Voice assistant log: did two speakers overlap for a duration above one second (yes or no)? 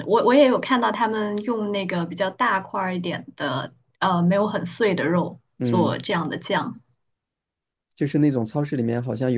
no